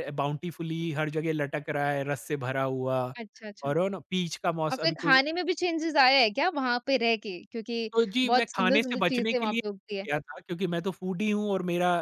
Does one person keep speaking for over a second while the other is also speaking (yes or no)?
yes